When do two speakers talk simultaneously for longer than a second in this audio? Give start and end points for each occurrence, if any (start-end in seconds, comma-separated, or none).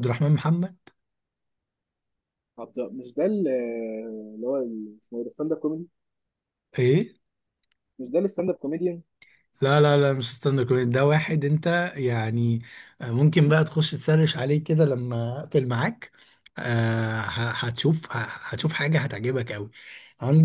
none